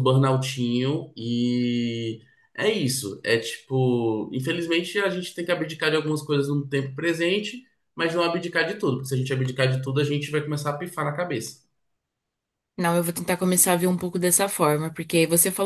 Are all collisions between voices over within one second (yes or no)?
yes